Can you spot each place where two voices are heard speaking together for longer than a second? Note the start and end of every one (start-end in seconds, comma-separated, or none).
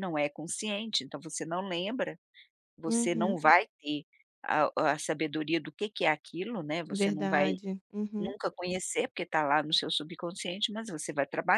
none